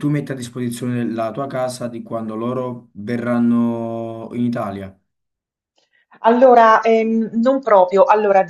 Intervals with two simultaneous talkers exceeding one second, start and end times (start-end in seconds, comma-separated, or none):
none